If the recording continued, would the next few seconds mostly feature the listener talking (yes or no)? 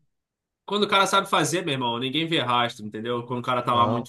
no